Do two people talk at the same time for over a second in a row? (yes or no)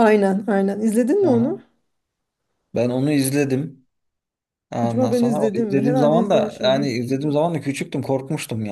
yes